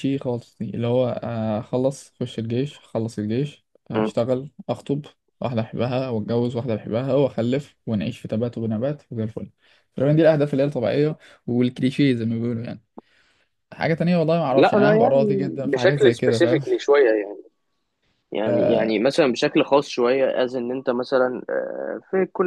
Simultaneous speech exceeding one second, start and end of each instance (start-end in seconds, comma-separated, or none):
14.5-16.6